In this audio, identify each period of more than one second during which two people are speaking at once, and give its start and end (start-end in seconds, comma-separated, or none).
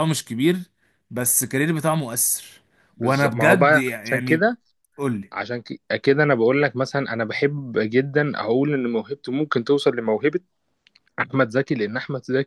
3.0-4.5